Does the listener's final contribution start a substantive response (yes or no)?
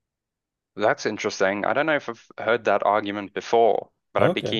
no